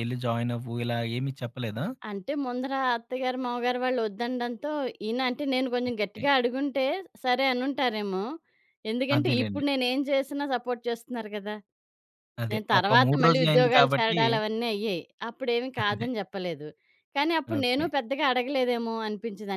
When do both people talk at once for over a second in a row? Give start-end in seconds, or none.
12.5-14.2